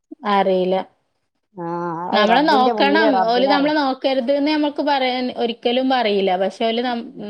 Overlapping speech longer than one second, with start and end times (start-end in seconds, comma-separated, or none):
2.1-3.8